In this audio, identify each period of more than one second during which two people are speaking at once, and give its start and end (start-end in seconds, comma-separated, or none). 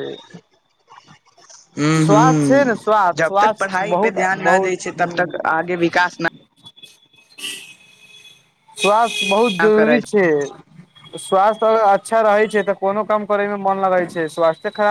3.2-5.5